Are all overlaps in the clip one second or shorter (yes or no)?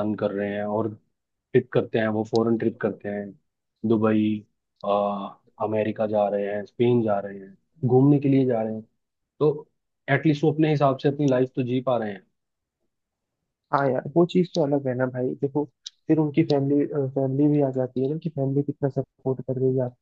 yes